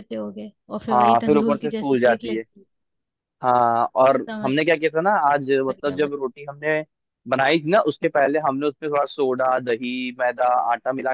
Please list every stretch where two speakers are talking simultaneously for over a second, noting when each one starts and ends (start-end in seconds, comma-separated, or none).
0.9-2.4